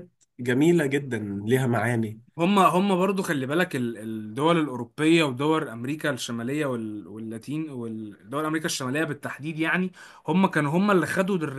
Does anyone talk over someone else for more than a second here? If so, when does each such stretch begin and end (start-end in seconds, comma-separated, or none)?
none